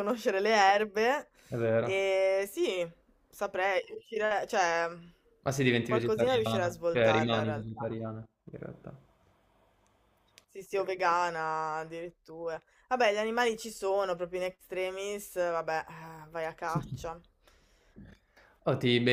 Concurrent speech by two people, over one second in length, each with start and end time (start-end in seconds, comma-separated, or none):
5.8-8.0